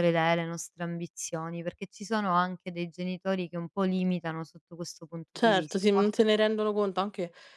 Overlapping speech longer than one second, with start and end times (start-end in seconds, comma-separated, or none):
none